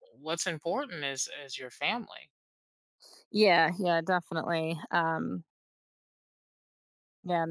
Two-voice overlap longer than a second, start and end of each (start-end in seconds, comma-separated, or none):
none